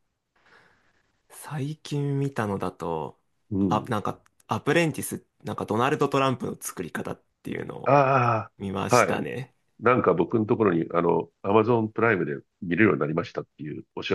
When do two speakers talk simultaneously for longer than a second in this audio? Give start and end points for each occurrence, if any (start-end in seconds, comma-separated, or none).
none